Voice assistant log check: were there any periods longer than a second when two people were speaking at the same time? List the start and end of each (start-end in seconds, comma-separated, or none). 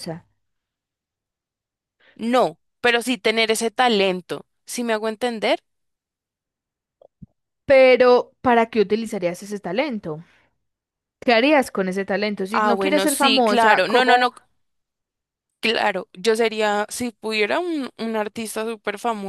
12.5-14.3